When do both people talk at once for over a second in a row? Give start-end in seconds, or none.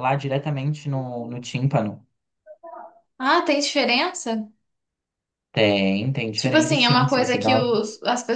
6.4-7.7